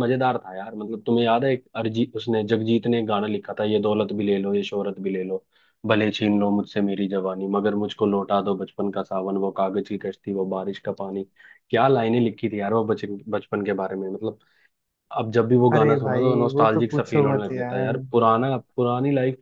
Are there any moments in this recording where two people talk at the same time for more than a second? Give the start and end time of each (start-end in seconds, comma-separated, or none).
15.8-17.9